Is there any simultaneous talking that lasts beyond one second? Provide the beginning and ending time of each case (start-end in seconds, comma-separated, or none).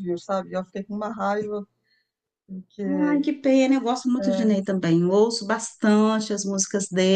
none